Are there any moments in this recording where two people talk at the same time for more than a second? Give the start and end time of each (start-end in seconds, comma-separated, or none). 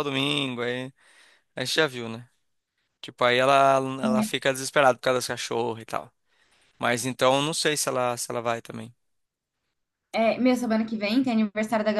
none